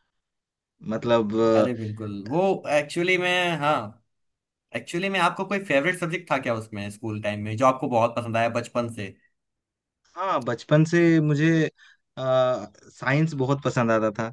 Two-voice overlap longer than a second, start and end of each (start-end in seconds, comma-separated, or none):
none